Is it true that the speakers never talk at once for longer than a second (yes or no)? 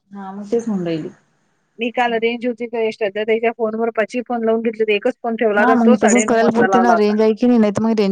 no